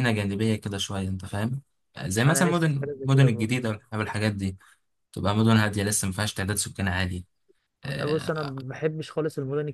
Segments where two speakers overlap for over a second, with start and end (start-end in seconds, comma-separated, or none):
2.3-3.5